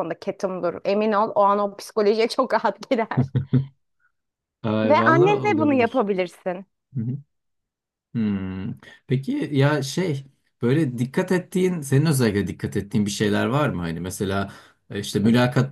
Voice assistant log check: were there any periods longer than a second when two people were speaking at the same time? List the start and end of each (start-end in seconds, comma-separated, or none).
4.8-6.1